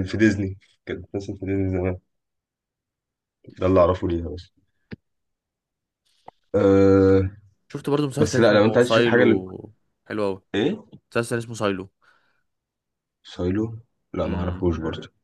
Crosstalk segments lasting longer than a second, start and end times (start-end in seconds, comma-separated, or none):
8.2-9.4